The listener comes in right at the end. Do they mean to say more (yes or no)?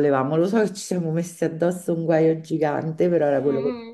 yes